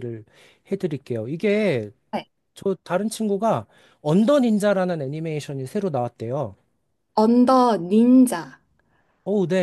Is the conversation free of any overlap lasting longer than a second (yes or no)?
yes